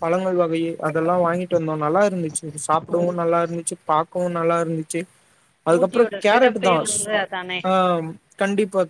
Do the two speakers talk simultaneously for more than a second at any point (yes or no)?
yes